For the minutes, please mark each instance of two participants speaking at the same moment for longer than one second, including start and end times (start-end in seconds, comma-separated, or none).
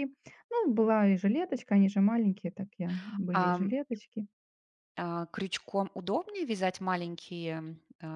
none